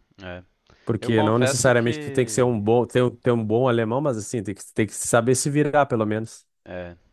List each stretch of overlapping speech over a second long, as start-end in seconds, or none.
1.0-2.6